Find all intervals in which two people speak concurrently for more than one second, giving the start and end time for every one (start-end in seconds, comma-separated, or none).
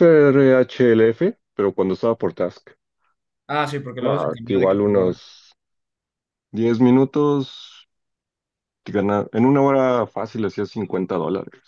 4.0-5.2